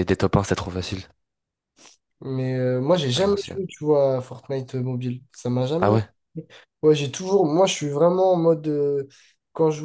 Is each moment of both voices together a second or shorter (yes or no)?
yes